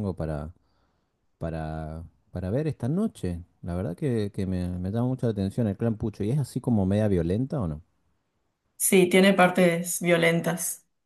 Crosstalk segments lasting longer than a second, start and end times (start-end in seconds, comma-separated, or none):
none